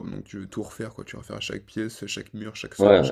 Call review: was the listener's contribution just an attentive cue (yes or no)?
no